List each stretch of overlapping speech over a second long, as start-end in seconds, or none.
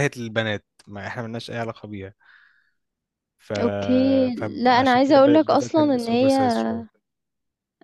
4.4-6.3